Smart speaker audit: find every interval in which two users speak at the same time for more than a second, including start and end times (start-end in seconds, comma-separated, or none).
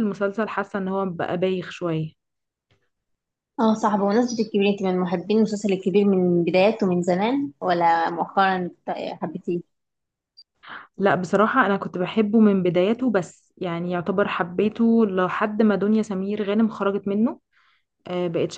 none